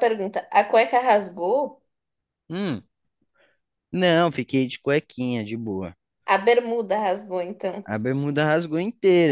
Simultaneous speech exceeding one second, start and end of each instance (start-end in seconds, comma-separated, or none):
none